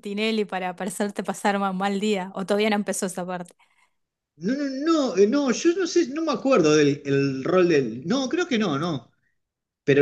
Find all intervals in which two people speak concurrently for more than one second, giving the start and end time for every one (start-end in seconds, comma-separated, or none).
none